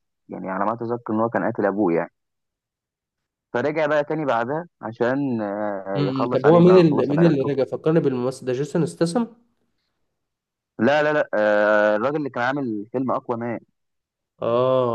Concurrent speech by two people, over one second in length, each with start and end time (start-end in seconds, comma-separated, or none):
6.0-7.5